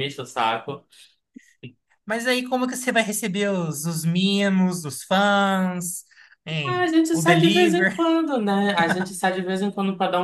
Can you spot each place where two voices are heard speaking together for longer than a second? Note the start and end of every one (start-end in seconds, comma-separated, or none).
6.6-8.1